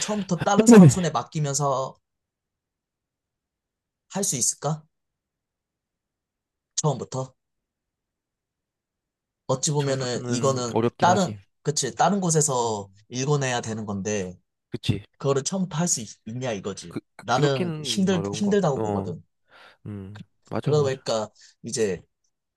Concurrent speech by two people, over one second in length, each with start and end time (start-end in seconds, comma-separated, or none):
9.8-11.4, 16.9-19.1